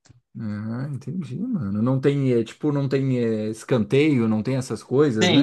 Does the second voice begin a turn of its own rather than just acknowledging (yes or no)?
yes